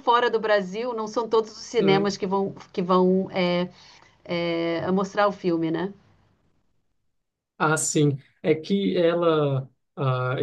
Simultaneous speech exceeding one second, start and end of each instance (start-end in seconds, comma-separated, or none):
none